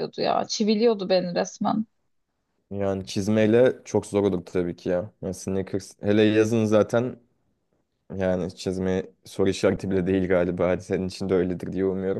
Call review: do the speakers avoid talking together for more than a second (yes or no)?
yes